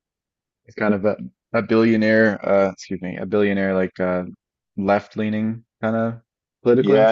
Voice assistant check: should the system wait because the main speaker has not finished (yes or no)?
no